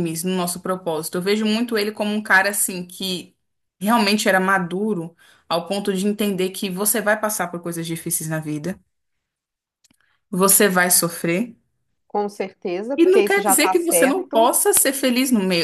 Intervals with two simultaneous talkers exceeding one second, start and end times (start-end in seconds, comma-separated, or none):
13.0-14.6